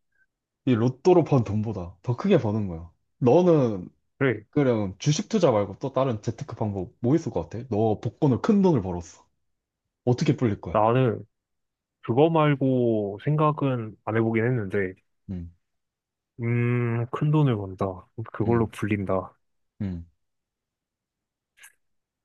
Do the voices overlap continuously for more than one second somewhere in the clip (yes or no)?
no